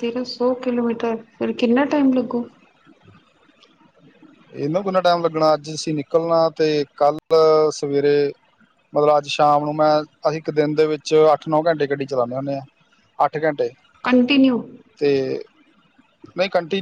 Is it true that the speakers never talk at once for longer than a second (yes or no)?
yes